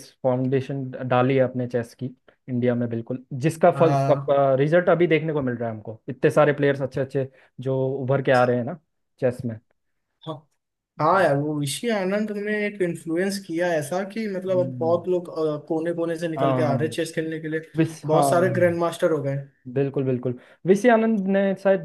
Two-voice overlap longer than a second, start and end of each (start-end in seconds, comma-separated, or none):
none